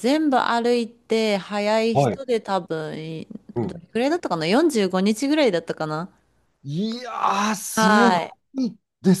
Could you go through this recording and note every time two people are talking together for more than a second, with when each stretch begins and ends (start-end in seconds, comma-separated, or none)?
none